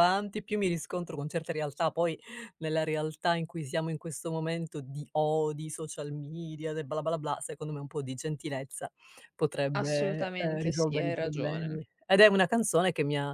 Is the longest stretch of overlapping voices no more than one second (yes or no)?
no